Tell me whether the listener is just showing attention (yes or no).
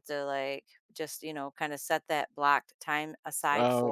no